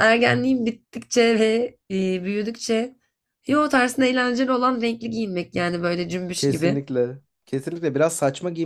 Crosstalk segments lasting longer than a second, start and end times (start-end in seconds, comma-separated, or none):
none